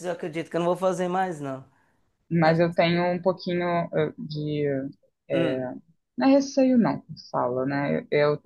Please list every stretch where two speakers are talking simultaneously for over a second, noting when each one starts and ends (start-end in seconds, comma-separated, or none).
none